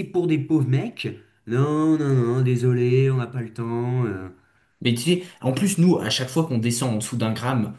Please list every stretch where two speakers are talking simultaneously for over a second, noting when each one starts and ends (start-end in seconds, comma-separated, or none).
none